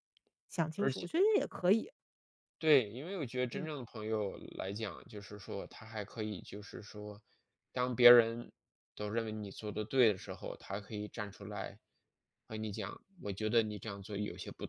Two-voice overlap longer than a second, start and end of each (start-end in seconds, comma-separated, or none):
none